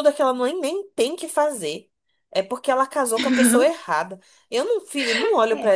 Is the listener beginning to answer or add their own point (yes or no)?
no